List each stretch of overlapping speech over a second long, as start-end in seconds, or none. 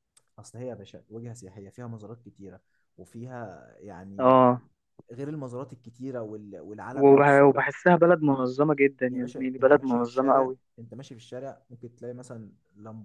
9.1-10.6